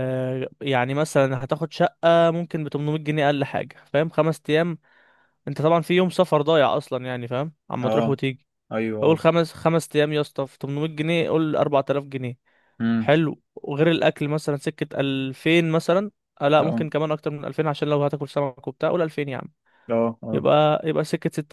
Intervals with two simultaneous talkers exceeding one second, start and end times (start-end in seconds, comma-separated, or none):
none